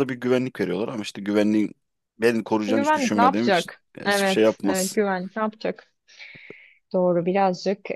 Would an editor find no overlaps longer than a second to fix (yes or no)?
no